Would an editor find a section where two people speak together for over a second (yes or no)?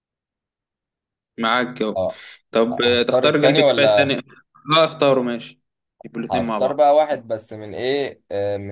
yes